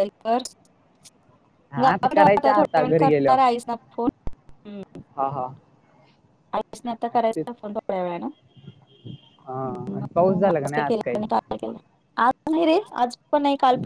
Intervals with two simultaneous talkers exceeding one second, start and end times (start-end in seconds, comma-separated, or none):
1.8-3.4